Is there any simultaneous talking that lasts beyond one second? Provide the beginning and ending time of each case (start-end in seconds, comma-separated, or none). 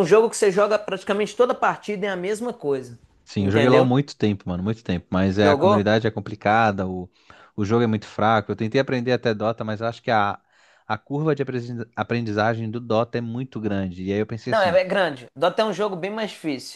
none